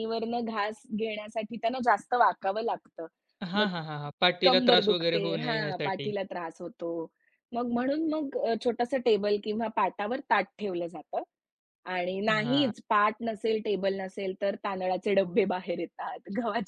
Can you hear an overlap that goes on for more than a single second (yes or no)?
yes